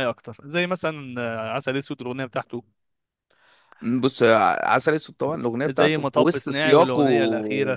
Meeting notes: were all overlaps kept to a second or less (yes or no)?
no